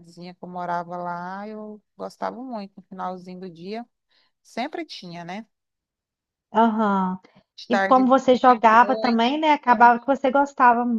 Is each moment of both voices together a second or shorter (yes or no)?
yes